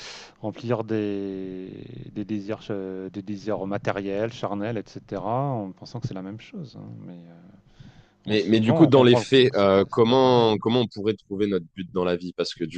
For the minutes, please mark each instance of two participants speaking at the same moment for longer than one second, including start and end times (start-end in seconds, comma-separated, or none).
8.3-10.8